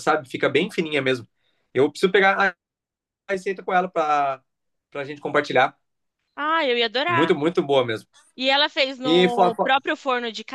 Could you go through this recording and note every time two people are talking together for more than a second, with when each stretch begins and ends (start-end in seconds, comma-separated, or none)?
none